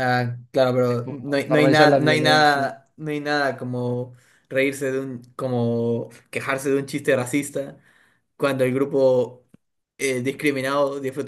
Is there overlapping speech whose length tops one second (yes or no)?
yes